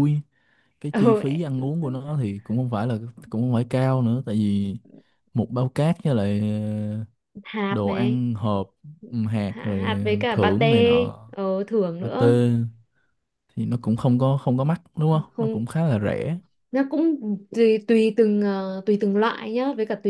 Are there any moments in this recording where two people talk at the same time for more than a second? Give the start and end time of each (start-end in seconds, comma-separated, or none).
9.5-11.0